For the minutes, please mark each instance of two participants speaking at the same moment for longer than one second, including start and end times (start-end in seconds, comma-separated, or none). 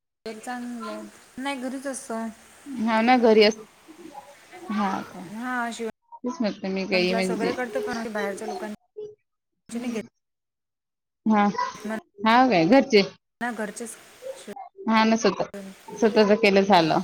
none